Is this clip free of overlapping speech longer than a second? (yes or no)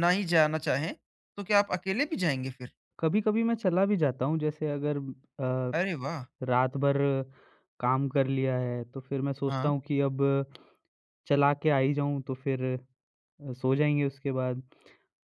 yes